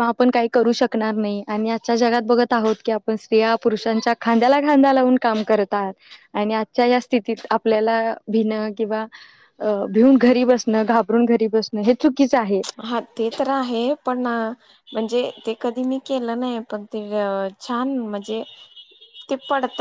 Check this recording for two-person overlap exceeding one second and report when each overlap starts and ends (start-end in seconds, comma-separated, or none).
none